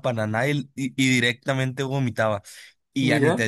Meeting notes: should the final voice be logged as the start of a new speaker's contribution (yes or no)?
no